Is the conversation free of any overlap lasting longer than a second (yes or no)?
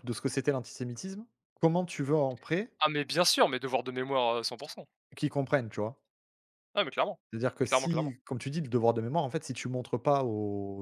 yes